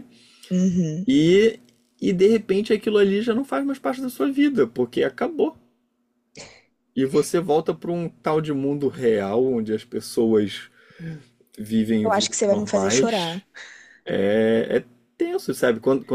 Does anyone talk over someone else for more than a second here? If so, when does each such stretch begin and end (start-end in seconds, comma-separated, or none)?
12.0-13.4